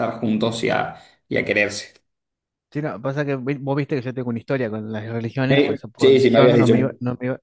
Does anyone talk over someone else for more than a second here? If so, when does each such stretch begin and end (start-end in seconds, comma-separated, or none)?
5.5-6.8